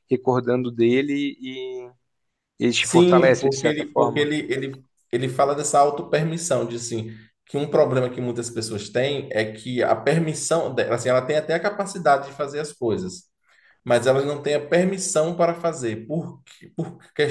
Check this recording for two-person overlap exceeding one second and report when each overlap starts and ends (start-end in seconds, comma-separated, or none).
2.8-4.3